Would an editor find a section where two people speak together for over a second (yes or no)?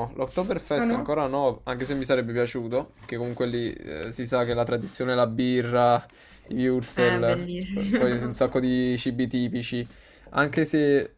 yes